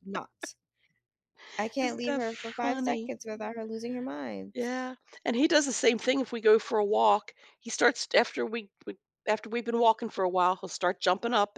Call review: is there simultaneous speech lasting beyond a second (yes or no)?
yes